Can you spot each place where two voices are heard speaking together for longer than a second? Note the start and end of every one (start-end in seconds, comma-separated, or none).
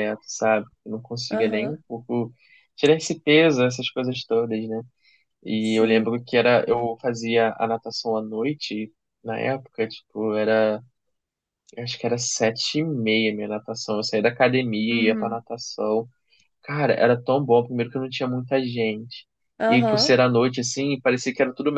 none